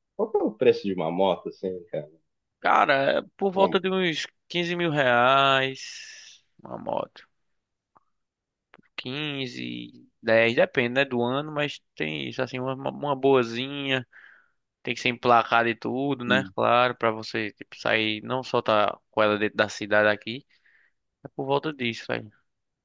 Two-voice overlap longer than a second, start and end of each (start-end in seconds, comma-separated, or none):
none